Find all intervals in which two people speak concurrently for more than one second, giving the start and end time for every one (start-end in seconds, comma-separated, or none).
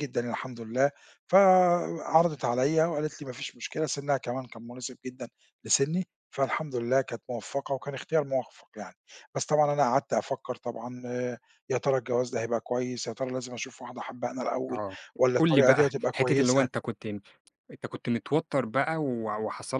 15.4-16.7